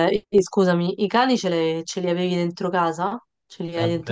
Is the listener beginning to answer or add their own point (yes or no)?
yes